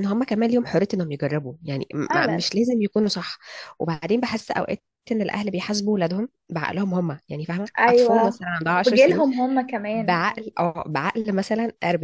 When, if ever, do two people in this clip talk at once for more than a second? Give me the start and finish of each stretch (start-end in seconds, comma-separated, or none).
7.8-9.2